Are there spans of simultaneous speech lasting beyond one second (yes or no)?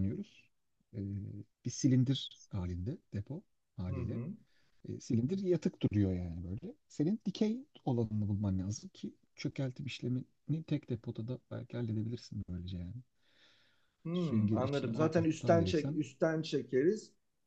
yes